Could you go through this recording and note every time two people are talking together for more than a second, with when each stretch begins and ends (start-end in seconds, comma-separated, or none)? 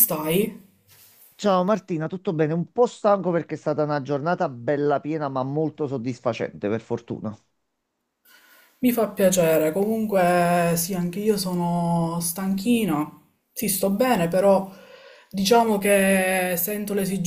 none